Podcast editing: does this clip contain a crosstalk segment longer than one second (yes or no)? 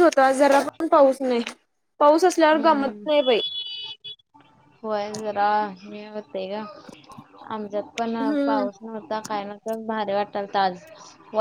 no